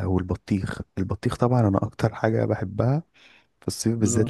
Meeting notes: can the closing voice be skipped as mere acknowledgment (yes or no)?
yes